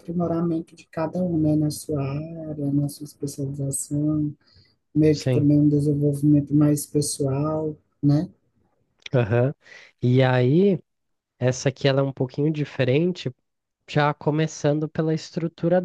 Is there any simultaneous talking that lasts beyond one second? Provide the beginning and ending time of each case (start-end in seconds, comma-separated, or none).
none